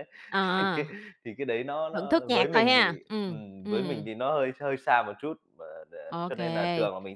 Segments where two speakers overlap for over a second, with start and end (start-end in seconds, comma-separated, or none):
1.9-4.1